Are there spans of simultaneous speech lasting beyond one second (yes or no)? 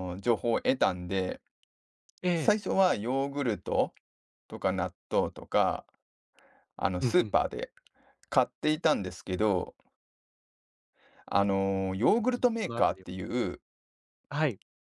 yes